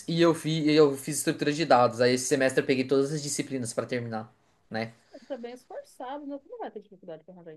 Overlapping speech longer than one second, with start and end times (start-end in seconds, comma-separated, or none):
none